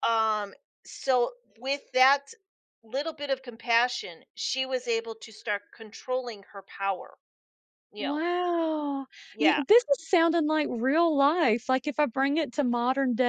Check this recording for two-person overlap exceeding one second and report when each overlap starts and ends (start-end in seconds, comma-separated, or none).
none